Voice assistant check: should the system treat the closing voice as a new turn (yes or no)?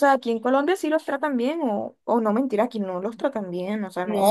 yes